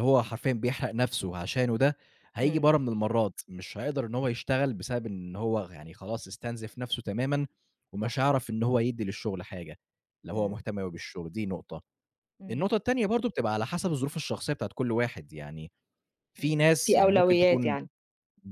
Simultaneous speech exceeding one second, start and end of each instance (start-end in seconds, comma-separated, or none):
16.4-17.8